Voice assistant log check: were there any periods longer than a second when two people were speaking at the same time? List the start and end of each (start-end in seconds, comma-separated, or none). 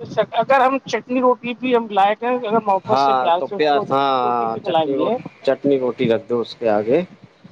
2.9-5.2